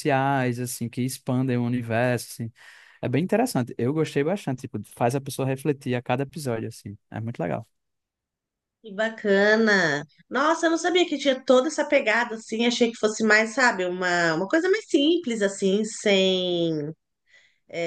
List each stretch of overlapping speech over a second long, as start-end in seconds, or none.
none